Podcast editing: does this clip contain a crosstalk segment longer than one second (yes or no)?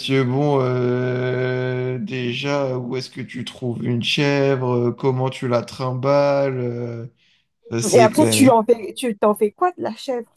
no